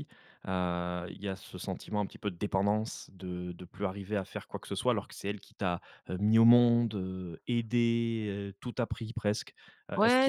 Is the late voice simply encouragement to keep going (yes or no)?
no